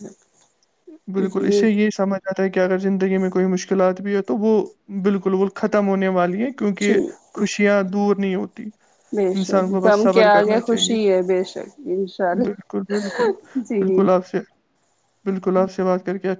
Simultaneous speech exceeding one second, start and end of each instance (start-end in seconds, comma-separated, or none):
9.4-11.0